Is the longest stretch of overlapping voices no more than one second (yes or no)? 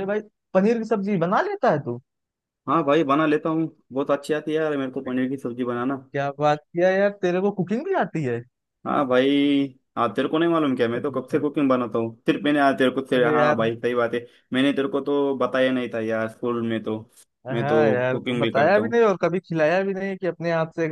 no